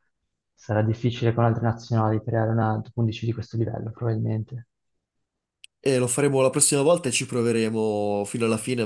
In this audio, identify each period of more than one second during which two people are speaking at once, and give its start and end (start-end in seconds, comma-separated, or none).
none